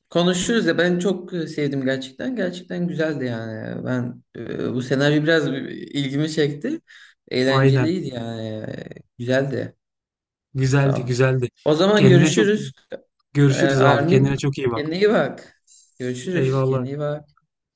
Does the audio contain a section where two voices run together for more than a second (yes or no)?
yes